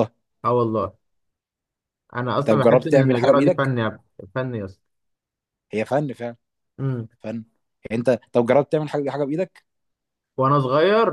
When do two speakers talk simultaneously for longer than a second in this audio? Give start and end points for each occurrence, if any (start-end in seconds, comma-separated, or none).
2.5-3.7